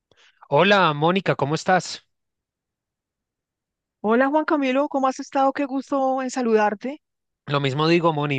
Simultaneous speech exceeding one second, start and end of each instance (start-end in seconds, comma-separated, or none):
none